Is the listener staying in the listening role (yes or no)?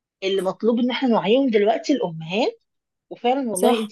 yes